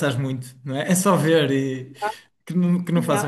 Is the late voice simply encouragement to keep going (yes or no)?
no